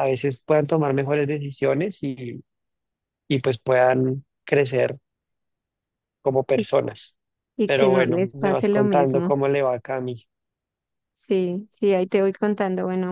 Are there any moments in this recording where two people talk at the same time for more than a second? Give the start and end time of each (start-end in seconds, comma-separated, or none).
7.7-9.3